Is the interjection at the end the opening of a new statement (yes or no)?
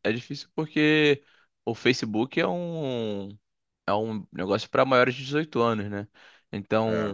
no